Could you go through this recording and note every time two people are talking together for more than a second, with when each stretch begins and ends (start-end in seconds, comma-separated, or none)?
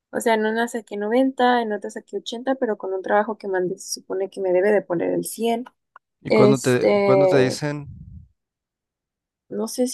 6.3-7.6